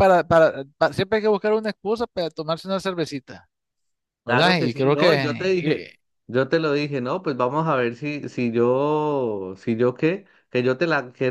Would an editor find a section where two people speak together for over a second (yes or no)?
yes